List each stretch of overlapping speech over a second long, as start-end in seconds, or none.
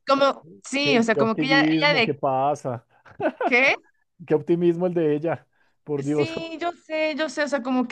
0.8-2.2